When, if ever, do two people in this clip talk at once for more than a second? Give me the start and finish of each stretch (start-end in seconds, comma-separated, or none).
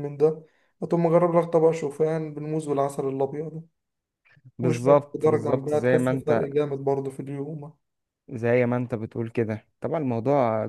4.6-6.5